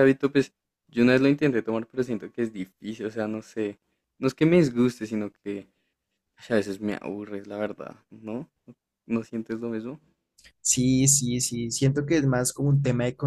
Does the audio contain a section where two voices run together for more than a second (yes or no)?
no